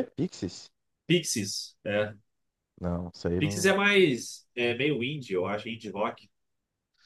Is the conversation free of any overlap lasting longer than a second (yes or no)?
yes